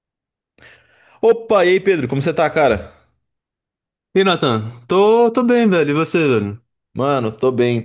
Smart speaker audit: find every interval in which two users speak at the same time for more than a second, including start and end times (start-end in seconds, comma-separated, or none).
none